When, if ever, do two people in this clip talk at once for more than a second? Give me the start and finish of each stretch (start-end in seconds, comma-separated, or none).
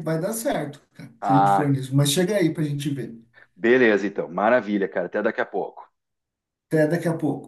none